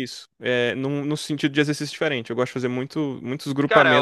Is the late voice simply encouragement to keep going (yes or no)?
no